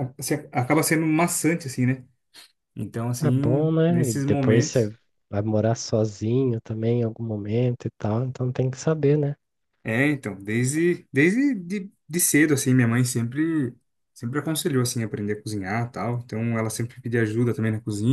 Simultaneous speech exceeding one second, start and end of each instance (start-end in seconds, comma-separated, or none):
3.2-4.9